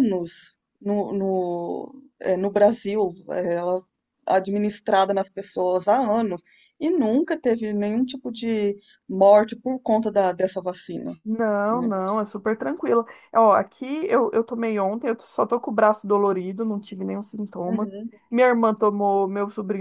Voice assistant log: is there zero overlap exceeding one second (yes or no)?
yes